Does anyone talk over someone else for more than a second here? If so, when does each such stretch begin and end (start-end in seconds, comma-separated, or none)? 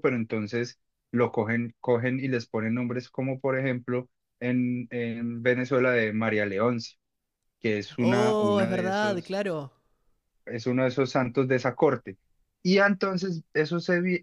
8.0-9.4